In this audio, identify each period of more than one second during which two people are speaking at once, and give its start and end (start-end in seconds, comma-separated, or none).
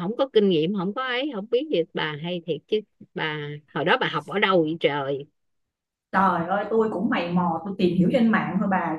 none